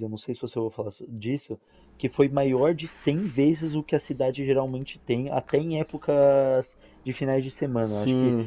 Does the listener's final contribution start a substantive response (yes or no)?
no